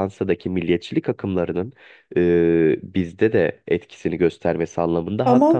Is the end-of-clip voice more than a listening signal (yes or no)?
no